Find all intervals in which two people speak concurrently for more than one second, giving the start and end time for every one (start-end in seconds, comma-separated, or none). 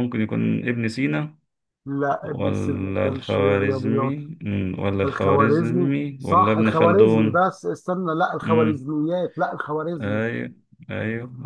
2.2-4.2, 5.0-7.4